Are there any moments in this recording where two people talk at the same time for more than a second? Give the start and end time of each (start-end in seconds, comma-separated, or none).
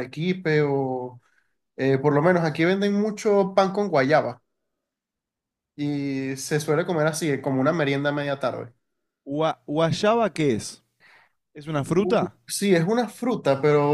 none